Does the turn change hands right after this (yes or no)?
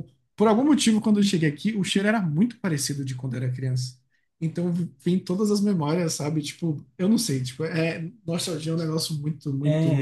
yes